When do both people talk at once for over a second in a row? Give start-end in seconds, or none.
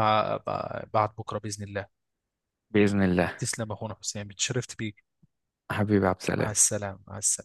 none